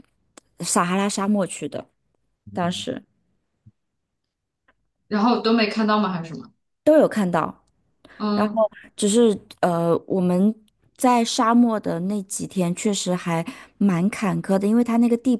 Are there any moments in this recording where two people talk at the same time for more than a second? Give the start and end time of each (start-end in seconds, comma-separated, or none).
none